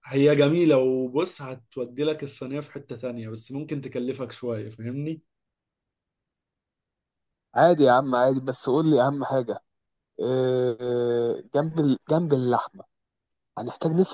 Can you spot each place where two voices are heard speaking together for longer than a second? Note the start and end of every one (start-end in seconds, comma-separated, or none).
none